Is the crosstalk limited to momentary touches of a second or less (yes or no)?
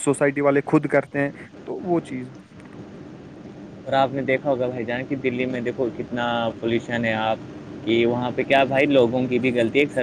yes